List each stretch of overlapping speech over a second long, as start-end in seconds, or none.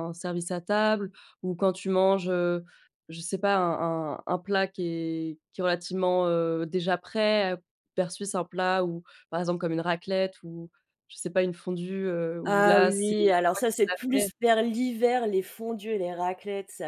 12.4-14.3